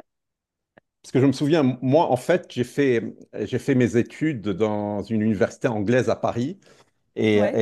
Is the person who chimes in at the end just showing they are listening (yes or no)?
yes